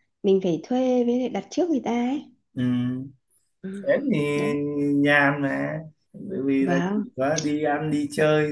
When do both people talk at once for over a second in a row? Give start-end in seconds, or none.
none